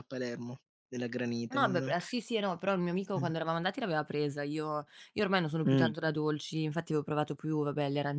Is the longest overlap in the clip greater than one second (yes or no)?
no